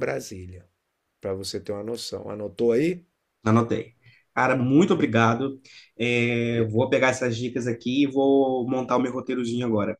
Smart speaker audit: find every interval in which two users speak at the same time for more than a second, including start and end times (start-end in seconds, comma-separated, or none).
none